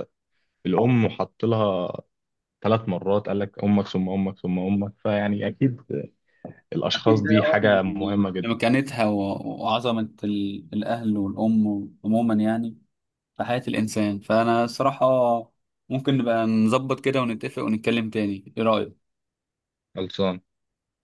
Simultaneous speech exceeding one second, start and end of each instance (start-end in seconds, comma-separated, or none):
7.0-8.5